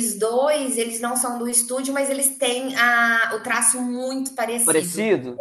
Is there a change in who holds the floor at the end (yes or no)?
yes